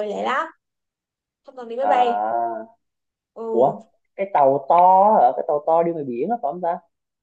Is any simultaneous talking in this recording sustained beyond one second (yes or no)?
no